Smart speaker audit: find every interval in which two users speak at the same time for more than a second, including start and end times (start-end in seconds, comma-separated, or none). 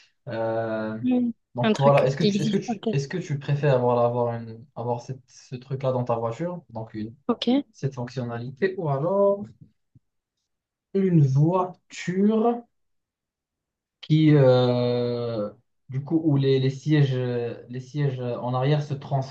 1.6-3.0